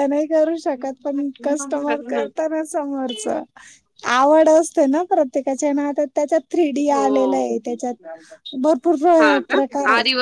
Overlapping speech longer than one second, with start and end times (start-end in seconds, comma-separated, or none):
0.8-2.3